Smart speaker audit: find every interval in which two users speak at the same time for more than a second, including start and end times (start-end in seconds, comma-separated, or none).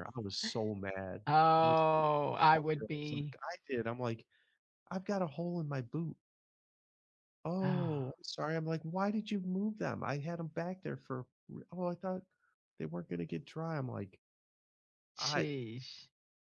1.6-3.4